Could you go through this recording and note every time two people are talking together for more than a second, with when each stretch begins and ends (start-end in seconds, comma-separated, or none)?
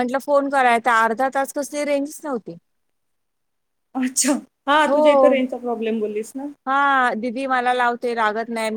none